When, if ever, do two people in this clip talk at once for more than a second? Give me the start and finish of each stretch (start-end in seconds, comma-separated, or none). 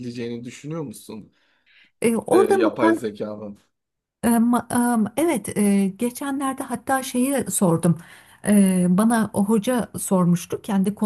none